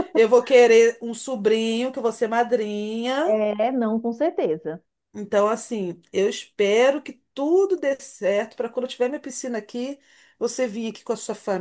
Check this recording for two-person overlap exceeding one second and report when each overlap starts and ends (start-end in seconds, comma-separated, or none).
none